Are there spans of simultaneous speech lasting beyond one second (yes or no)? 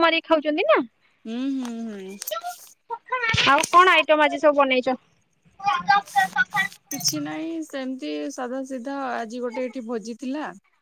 no